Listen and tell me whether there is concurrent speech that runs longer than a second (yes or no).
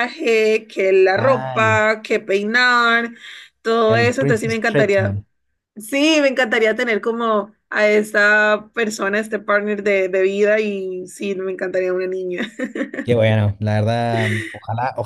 yes